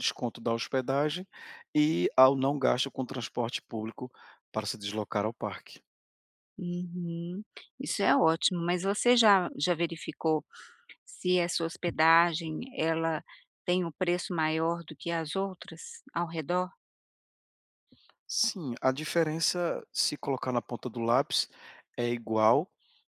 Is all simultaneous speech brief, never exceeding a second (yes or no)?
yes